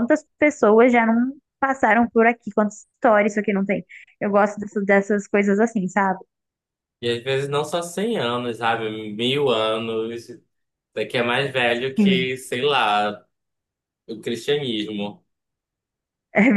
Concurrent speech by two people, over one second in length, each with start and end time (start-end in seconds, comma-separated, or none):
none